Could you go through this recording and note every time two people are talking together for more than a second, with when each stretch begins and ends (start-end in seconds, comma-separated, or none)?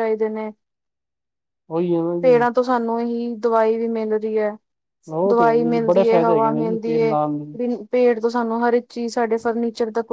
5.3-7.1